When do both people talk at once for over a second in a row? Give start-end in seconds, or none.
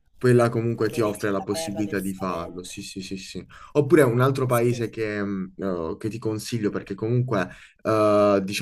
0.8-2.7